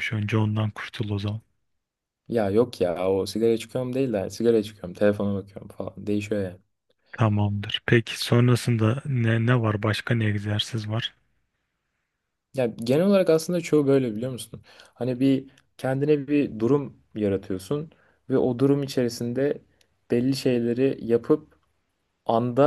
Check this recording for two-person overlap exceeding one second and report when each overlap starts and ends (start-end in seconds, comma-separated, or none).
none